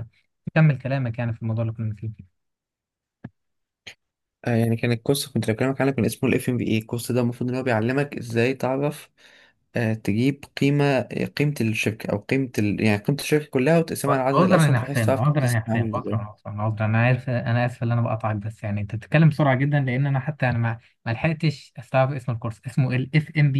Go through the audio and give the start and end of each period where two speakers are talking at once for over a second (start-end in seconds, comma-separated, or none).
14.3-16.3